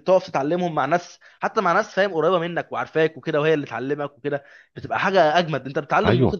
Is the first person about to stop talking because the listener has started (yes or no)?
no